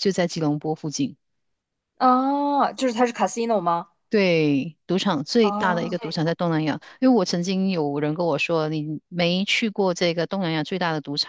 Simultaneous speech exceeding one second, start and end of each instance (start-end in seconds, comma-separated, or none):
none